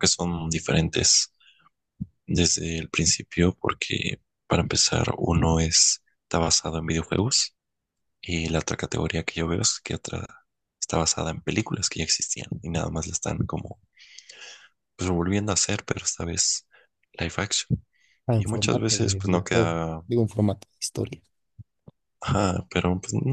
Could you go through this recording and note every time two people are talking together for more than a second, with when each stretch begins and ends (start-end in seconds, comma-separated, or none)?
18.4-20.0